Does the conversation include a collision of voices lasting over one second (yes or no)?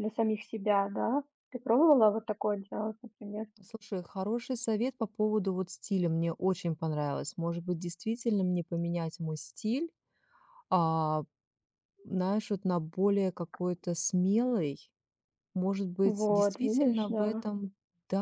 yes